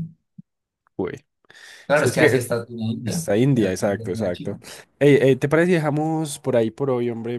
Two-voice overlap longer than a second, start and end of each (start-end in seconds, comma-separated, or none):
3.0-4.6